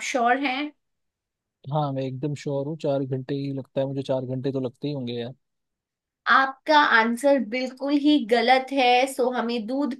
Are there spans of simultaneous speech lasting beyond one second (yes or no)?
no